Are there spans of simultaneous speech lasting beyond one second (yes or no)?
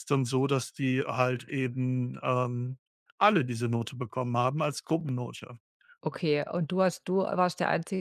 no